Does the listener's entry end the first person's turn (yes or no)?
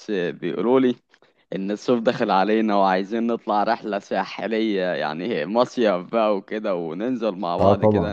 no